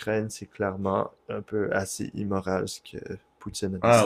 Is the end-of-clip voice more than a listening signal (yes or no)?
yes